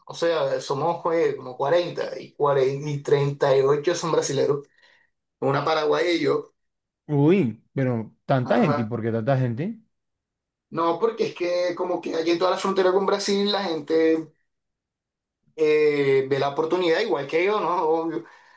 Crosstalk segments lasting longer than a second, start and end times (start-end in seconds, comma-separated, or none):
none